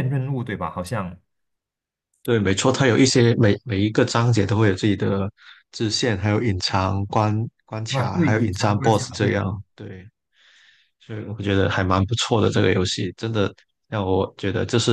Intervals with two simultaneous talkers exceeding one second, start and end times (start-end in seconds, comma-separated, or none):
7.9-9.5